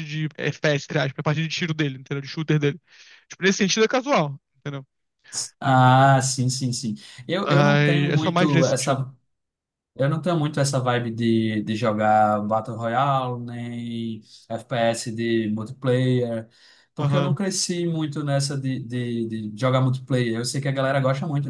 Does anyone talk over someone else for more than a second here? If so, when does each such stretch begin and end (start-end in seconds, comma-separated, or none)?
7.5-9.0